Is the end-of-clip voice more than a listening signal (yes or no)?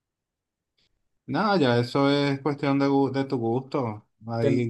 no